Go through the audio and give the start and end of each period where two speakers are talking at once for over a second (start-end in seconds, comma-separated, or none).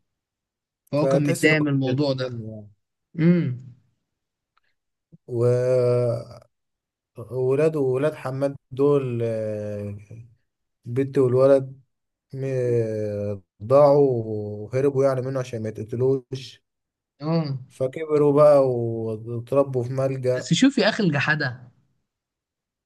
1.0-2.4